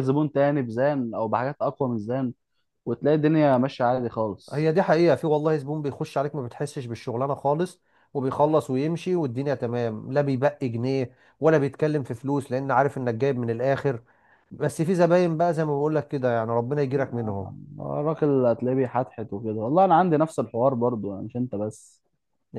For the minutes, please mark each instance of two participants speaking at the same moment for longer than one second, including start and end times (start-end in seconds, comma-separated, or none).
none